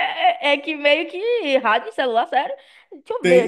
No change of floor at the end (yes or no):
no